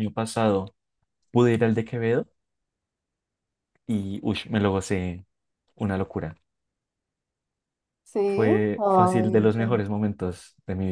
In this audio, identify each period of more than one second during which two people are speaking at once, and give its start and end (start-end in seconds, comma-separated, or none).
8.2-9.9